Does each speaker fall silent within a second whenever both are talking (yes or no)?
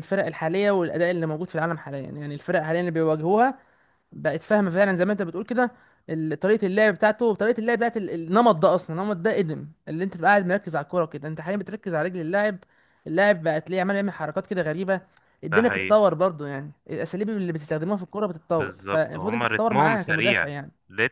no